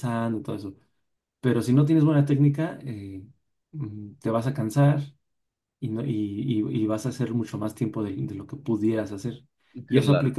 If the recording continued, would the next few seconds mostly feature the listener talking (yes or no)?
no